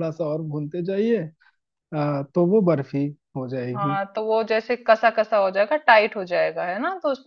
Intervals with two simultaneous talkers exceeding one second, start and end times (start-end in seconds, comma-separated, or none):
none